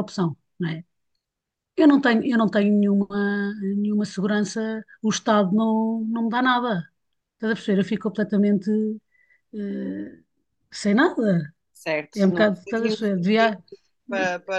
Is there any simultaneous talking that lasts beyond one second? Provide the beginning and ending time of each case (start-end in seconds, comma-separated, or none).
12.2-13.6